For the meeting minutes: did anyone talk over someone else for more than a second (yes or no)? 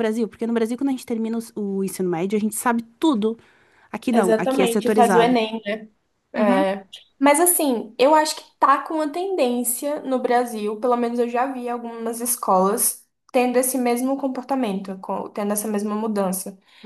yes